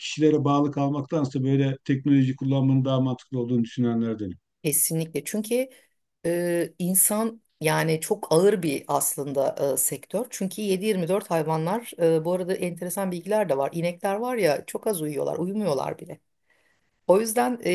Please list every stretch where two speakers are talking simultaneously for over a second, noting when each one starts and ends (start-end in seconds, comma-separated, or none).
none